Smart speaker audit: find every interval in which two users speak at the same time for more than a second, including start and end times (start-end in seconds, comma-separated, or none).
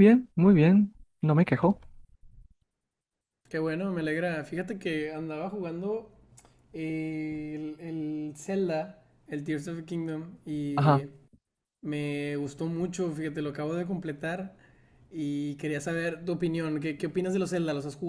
none